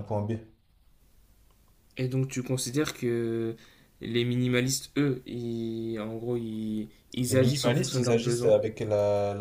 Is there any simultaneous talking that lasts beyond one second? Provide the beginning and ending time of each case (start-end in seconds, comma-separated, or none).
7.3-8.6